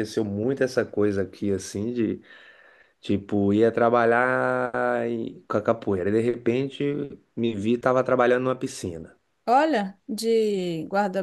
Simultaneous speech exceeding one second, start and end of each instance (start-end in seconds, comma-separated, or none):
none